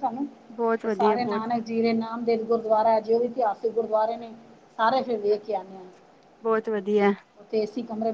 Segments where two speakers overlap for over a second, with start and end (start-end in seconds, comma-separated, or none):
none